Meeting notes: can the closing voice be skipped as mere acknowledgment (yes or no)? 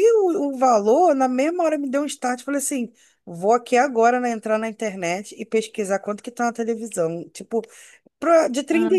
yes